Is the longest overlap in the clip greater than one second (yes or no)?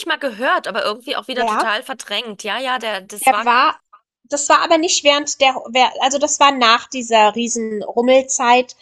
no